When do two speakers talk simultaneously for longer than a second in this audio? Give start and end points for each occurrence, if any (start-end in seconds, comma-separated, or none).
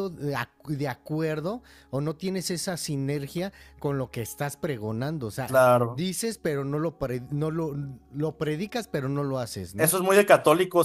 none